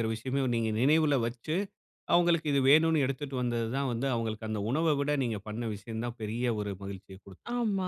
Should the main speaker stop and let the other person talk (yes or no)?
yes